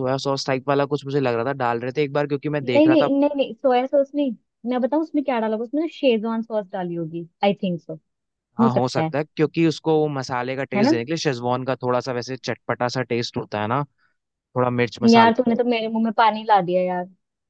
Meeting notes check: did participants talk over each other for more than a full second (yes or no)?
no